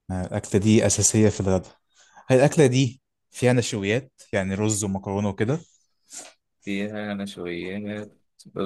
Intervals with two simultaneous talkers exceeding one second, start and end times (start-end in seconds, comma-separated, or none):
none